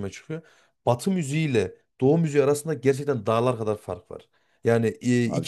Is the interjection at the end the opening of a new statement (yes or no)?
no